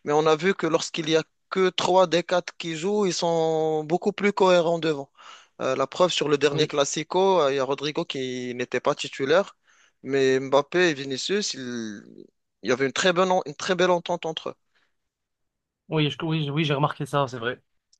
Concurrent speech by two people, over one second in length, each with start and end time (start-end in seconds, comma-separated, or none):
none